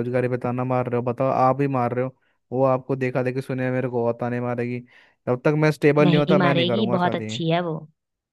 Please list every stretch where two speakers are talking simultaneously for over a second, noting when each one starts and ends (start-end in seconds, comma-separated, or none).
6.0-7.3